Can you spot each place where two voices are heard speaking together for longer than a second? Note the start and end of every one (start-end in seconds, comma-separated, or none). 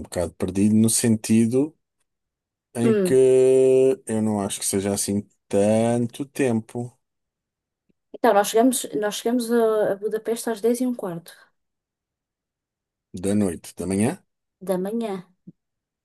none